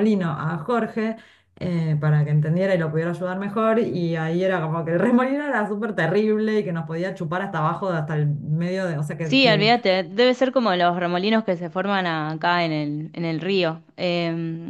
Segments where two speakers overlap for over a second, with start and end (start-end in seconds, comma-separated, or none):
none